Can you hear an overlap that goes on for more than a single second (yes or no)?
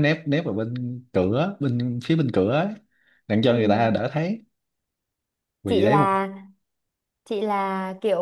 no